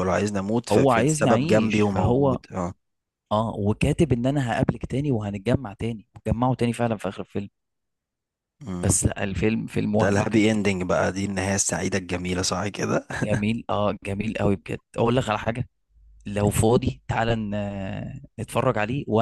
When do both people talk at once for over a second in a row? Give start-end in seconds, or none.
0.7-2.4